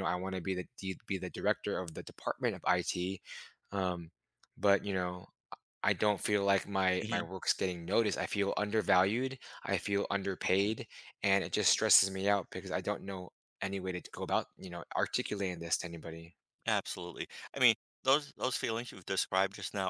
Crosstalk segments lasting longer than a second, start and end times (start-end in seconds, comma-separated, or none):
none